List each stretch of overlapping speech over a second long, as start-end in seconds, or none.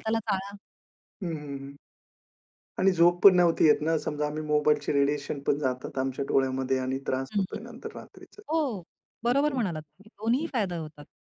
9.3-10.5